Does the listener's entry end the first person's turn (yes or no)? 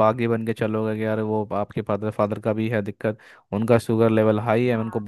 no